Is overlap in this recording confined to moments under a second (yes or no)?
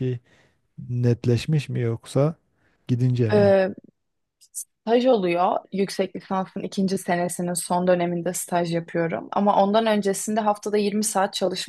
yes